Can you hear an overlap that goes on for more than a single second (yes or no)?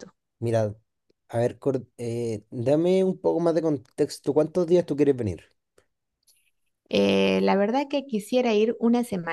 no